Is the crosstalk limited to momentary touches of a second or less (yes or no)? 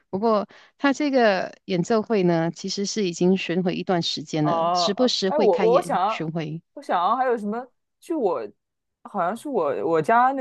no